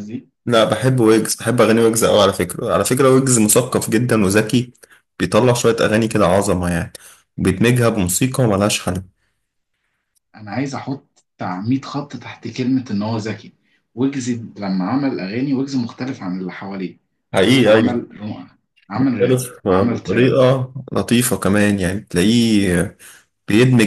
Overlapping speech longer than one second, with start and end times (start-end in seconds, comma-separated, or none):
19.0-20.4